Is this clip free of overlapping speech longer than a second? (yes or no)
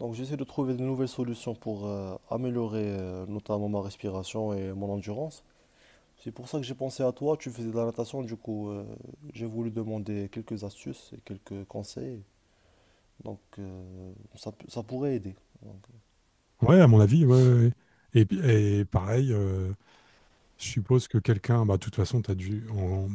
yes